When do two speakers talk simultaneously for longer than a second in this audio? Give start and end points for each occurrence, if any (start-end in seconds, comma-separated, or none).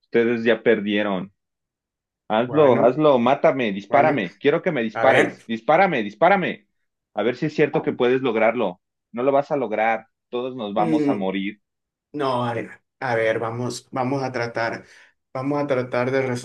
none